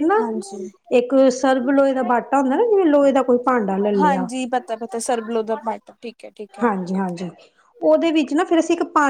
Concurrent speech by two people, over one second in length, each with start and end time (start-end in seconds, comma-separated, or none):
none